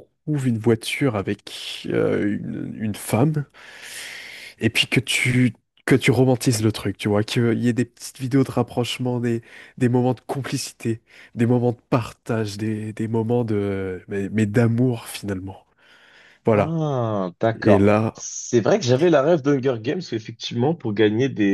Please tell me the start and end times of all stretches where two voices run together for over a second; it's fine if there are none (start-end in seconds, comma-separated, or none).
none